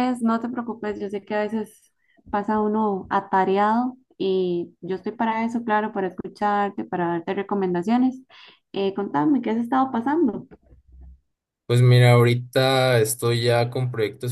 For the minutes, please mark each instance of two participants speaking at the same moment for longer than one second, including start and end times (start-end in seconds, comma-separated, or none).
none